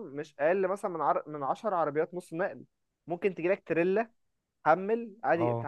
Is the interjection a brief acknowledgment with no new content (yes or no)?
yes